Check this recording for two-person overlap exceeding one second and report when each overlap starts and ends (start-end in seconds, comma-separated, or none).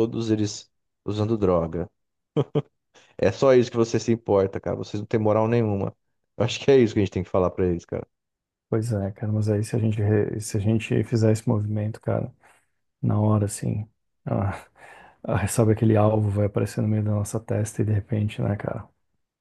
none